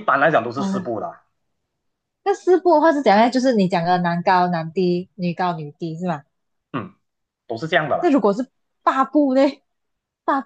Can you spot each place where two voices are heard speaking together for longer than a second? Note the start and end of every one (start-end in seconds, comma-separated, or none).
none